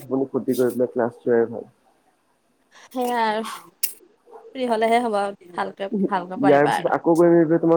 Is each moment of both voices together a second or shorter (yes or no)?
yes